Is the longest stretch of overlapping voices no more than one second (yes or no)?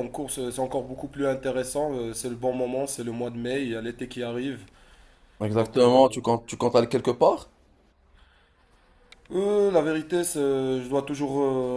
yes